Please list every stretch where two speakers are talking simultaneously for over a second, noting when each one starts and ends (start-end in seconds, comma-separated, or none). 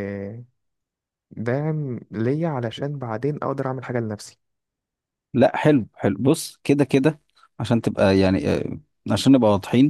none